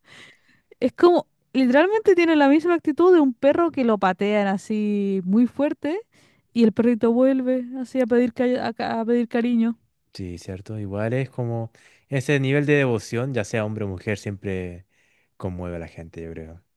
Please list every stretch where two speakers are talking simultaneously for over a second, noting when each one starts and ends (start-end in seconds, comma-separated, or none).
none